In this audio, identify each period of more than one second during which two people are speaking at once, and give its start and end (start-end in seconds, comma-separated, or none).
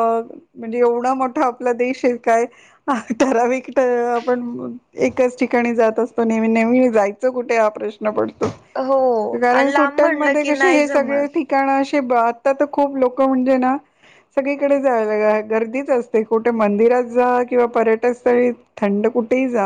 9.6-11.3